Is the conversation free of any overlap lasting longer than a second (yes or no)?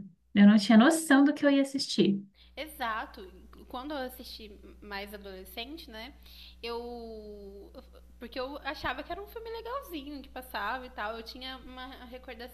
yes